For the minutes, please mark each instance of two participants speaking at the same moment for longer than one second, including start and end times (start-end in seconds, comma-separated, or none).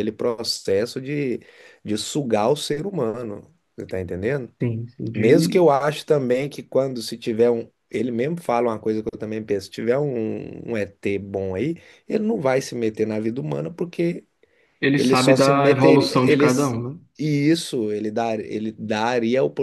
15.0-16.8